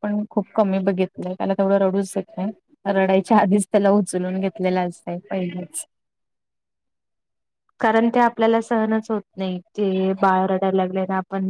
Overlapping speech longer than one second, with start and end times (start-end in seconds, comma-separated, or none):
none